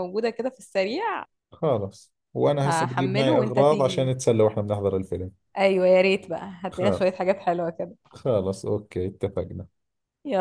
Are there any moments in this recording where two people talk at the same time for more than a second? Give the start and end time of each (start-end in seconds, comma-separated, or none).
2.7-4.1